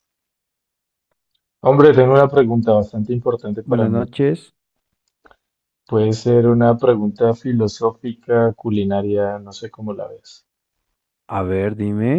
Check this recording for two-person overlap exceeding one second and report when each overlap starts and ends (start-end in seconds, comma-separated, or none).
none